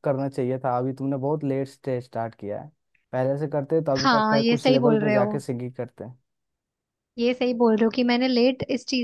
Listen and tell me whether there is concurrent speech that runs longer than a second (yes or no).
yes